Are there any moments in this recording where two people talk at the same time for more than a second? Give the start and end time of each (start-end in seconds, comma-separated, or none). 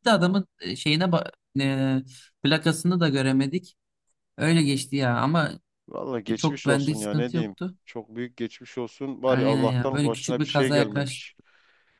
6.4-7.8, 9.3-11.3